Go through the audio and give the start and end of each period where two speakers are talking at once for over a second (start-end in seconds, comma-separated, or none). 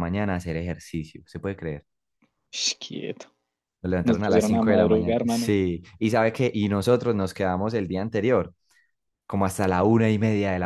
4.0-5.5